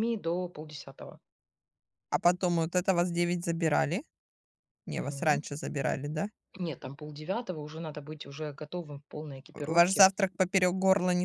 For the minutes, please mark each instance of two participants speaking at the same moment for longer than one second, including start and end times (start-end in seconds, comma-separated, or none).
none